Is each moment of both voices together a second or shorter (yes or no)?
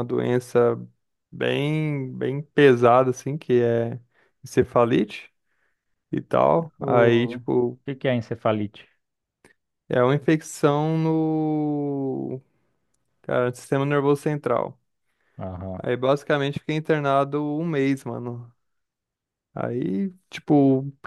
yes